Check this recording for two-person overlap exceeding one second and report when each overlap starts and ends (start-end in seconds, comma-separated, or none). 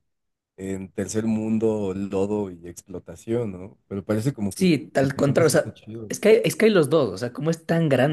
4.5-6.1